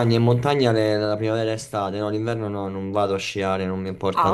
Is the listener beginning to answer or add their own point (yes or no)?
yes